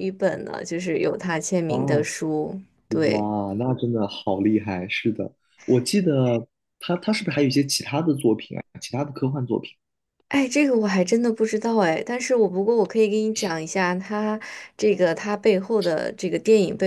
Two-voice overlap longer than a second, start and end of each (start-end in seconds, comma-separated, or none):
none